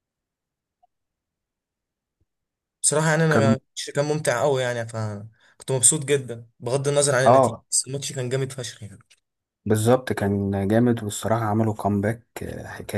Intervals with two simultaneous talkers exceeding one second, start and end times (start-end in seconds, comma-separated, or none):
none